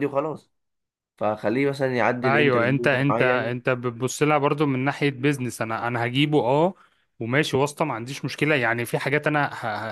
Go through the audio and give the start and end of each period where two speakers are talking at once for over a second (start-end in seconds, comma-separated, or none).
2.2-3.6